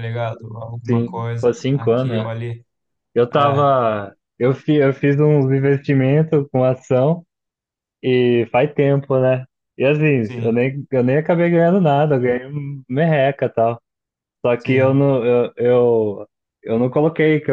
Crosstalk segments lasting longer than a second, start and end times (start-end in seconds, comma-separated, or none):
0.8-2.3